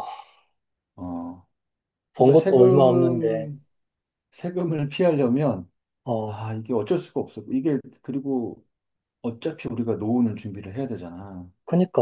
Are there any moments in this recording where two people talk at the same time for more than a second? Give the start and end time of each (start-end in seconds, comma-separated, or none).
2.2-3.5